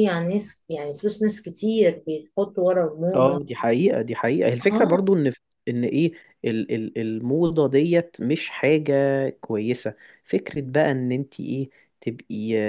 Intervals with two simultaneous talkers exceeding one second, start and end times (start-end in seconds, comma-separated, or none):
none